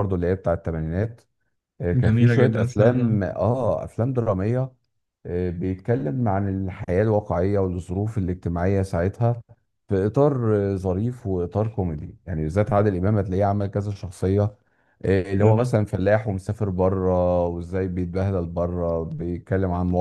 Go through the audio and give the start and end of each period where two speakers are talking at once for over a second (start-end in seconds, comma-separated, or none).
1.9-3.2